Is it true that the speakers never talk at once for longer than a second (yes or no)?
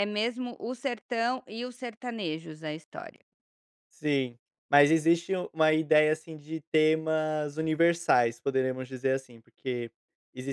yes